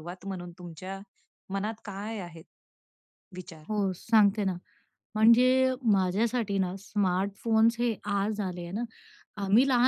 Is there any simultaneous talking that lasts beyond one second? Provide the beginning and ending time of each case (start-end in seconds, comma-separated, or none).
none